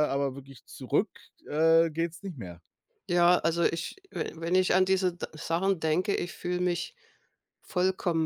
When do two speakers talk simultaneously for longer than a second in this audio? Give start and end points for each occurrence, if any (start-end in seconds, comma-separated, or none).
none